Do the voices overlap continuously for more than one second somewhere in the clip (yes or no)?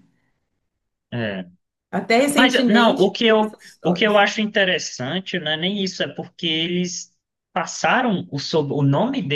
yes